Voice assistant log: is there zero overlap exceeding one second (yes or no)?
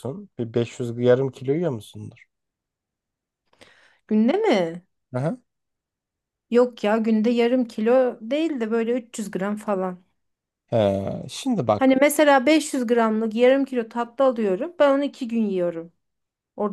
yes